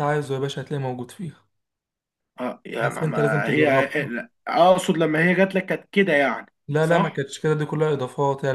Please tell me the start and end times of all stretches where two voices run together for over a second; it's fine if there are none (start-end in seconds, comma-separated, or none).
2.8-4.1